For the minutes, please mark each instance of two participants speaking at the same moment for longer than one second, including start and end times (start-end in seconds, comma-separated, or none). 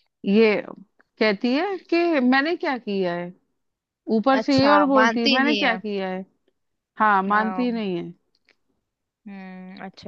4.4-5.8